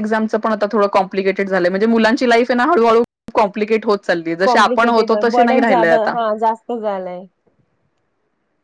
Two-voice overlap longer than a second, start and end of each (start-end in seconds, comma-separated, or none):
4.4-6.1